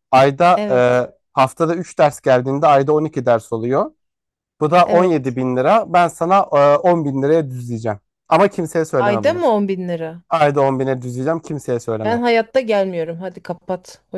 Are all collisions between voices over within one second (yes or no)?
yes